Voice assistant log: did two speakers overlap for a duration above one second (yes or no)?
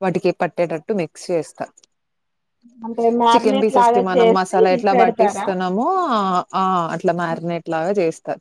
yes